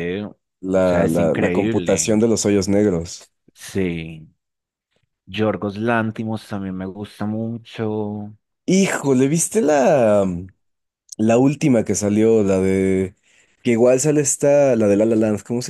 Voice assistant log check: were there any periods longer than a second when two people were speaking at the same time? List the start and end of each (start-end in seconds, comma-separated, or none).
0.7-2.1